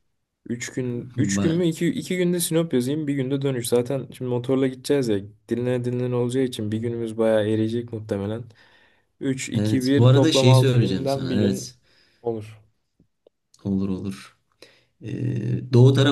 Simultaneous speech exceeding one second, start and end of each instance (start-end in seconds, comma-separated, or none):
9.5-11.7